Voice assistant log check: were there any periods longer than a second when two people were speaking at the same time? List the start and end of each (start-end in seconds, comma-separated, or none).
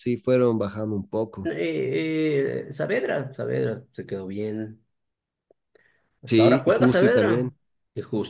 6.3-7.5